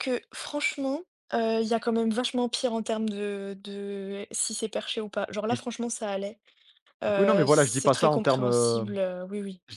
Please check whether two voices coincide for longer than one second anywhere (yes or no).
yes